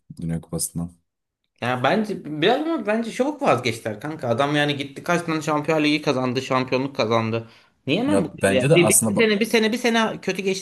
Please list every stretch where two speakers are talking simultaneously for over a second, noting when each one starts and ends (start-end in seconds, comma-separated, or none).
8.0-9.3